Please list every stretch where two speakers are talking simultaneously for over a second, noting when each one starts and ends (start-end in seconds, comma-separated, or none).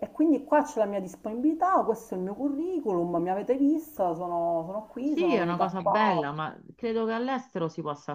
5.0-6.3